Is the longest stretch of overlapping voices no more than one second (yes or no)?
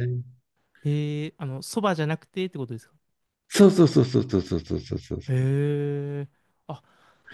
yes